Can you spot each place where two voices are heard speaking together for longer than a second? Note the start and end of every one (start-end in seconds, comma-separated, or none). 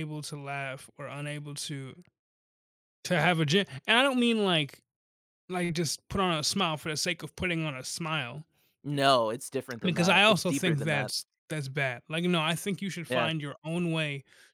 9.8-11.1